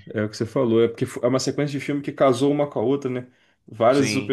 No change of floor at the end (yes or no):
yes